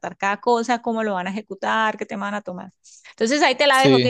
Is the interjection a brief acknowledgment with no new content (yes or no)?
yes